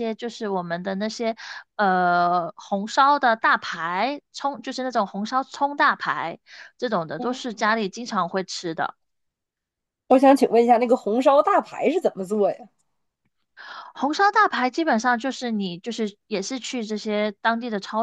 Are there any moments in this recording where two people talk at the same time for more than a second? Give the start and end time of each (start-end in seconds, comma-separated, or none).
none